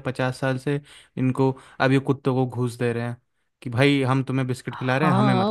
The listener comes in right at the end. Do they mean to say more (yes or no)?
yes